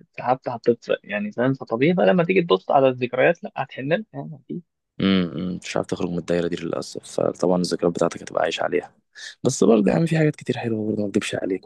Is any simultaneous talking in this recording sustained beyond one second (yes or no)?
no